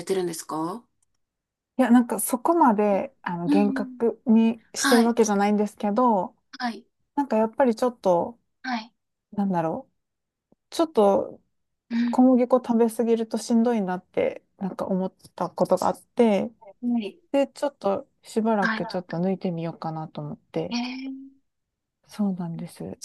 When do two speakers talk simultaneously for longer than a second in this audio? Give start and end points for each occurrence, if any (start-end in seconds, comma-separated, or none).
none